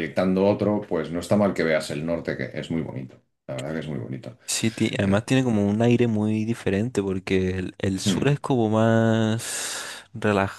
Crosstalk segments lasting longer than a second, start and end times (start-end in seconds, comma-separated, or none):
none